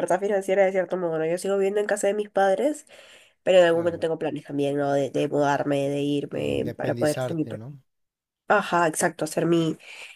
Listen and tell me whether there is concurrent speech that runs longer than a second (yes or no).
yes